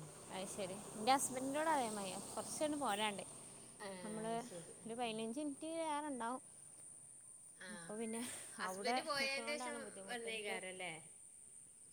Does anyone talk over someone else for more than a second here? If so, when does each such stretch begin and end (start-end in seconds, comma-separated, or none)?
8.7-10.6